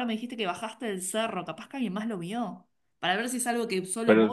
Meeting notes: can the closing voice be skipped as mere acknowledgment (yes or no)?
no